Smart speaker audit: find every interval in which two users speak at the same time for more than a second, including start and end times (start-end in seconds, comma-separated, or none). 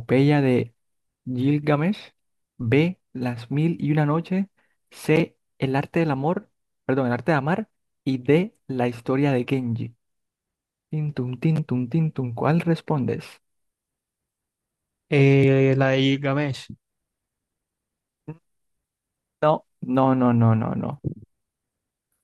none